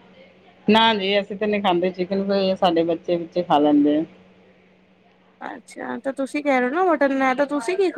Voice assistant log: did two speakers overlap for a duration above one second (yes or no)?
no